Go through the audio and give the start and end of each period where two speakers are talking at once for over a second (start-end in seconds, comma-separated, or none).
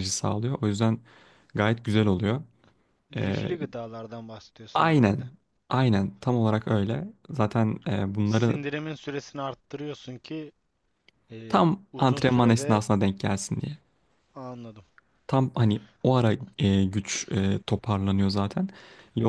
11.5-12.8